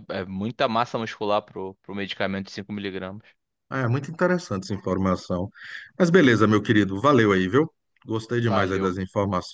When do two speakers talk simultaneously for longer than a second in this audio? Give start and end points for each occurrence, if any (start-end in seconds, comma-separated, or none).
none